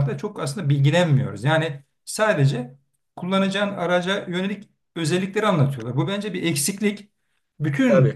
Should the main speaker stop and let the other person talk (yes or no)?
no